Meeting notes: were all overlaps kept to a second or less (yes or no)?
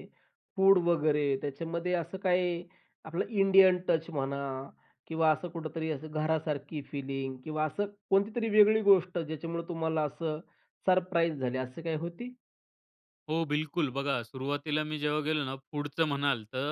yes